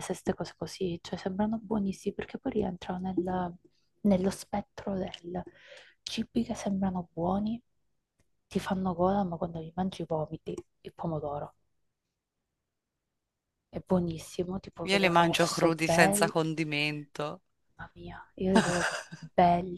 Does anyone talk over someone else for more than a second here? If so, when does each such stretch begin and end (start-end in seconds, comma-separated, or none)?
14.9-16.3